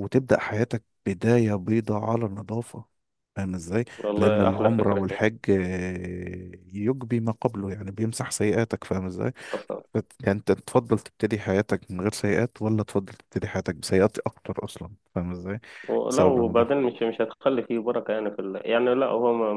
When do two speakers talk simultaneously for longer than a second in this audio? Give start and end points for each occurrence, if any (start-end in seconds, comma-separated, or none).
4.0-5.3